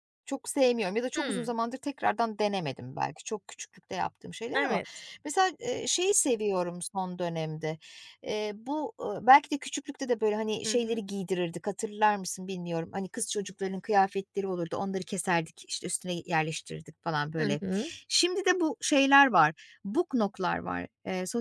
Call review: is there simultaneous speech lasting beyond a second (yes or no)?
no